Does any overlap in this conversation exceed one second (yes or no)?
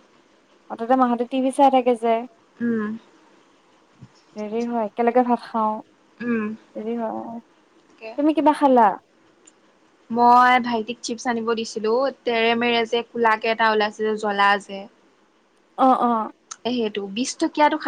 no